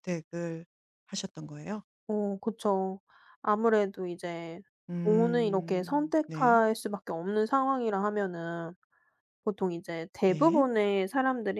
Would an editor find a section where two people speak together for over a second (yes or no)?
yes